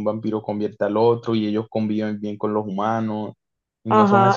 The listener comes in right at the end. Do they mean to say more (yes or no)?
yes